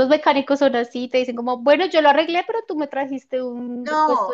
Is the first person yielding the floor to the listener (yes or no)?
yes